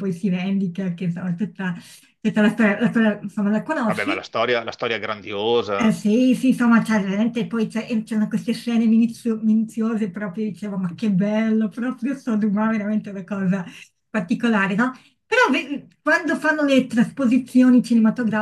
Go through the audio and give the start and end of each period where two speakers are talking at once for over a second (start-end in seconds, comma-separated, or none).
none